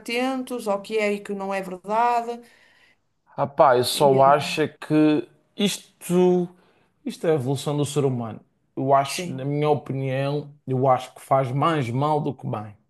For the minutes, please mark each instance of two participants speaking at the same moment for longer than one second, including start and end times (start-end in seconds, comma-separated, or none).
none